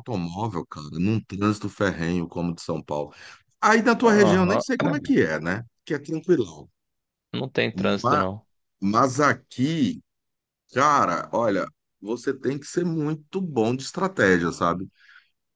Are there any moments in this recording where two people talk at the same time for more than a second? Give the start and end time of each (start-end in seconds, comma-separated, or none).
none